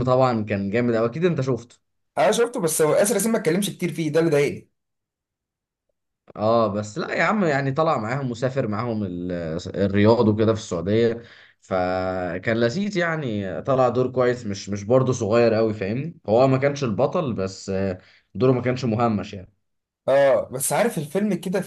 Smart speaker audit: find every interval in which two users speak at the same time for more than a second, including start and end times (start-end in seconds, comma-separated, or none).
none